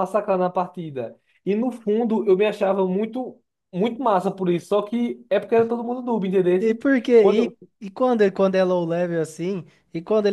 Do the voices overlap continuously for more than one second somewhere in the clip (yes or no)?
no